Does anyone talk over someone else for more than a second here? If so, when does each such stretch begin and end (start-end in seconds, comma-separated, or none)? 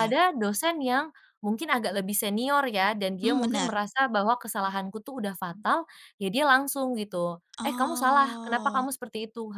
7.6-8.9